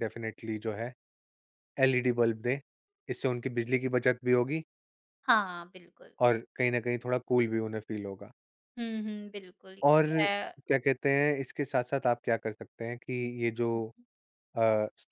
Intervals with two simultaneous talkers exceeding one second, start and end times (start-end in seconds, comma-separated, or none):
none